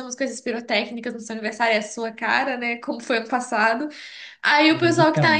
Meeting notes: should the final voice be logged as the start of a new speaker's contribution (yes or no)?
no